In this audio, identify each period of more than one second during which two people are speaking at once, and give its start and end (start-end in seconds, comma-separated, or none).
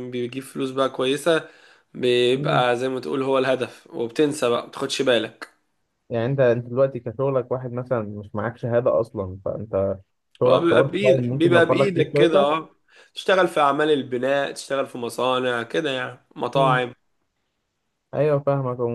10.5-12.5